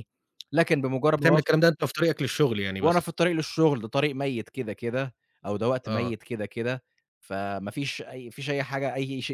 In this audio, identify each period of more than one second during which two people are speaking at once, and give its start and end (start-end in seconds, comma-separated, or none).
none